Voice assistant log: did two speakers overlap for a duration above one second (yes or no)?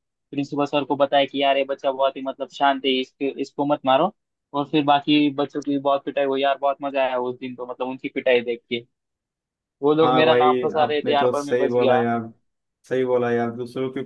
yes